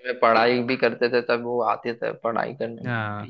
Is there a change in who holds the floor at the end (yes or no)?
yes